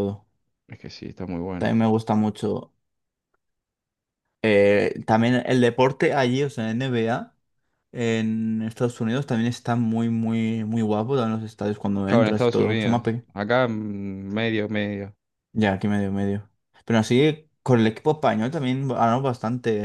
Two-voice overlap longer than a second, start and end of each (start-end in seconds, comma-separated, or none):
12.0-13.2